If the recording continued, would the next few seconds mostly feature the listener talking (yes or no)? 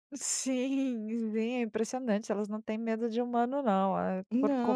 yes